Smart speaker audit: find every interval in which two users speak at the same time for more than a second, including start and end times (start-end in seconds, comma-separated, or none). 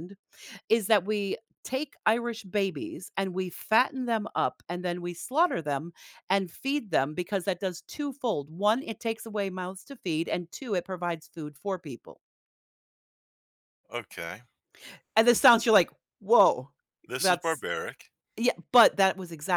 none